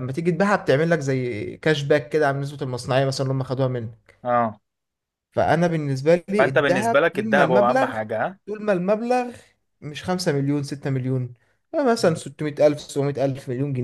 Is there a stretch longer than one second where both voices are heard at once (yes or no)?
yes